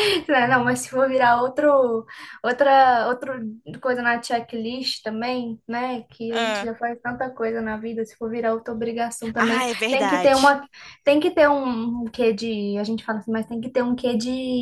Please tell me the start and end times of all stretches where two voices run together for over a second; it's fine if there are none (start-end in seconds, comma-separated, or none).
9.3-10.6